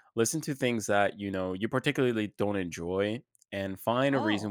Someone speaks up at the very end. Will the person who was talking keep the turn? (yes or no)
yes